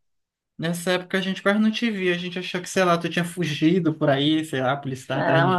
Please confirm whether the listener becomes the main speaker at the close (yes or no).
yes